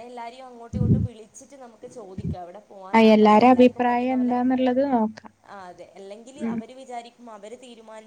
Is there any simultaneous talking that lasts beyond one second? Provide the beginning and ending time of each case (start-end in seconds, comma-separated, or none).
3.0-4.3